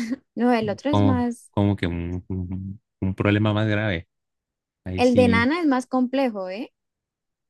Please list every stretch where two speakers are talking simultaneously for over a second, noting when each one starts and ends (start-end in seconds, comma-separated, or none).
none